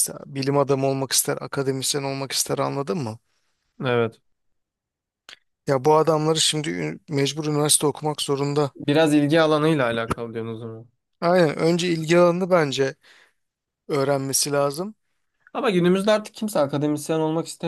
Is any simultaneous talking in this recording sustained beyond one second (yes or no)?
no